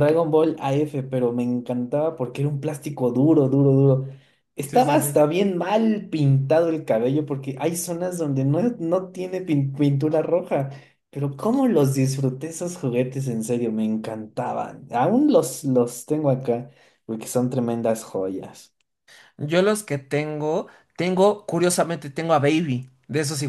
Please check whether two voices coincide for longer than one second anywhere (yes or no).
no